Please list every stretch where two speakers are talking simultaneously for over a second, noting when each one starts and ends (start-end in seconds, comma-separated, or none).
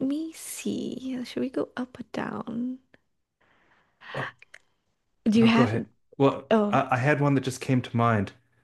none